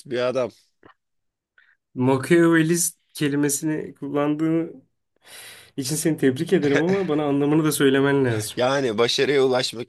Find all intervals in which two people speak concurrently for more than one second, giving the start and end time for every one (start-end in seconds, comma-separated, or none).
none